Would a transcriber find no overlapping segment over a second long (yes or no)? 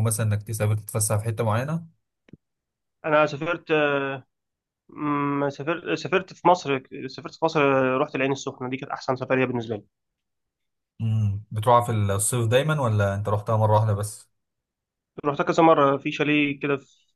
yes